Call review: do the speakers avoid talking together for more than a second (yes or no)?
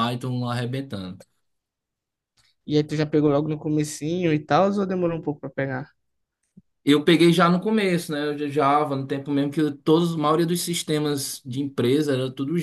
yes